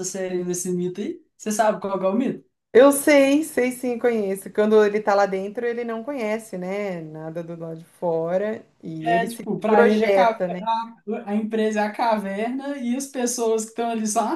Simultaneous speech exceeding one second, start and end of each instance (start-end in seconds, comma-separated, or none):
9.0-10.4